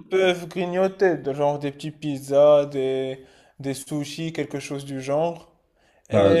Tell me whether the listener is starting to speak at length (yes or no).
yes